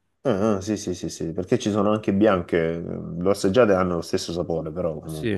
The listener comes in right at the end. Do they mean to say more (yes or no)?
yes